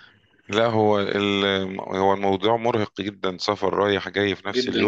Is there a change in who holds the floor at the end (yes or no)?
yes